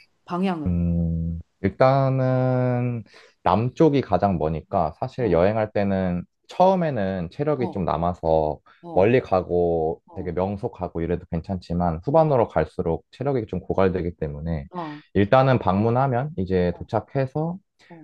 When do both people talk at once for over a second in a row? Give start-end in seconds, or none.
none